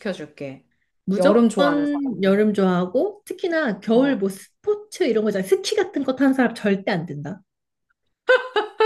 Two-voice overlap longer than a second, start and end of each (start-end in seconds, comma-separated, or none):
1.2-2.4